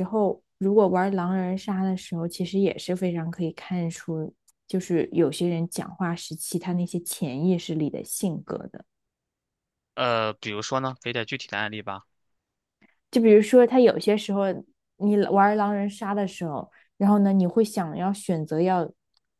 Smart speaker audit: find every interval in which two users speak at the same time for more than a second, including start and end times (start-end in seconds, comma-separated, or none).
none